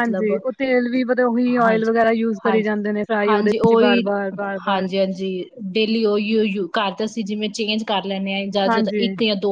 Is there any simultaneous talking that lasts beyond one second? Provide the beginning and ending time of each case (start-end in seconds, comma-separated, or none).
none